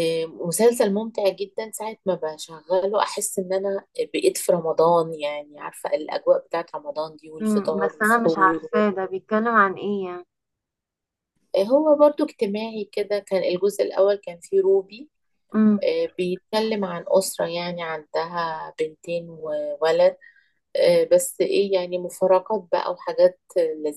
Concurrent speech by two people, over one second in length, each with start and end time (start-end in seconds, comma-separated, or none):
7.4-8.8